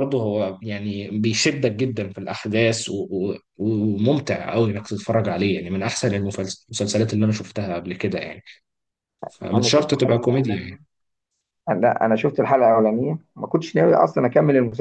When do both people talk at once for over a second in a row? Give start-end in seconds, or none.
9.5-10.8